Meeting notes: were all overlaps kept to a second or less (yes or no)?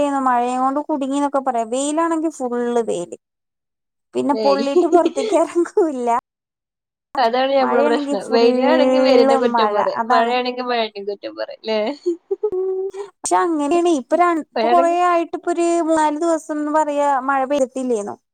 no